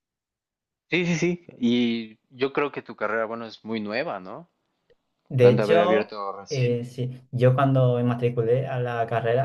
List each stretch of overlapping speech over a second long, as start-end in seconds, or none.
5.4-7.0